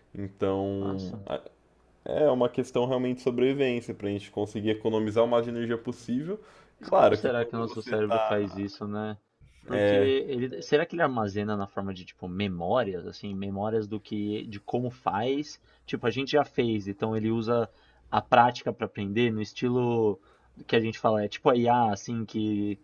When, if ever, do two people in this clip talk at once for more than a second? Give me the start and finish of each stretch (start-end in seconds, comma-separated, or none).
6.8-8.7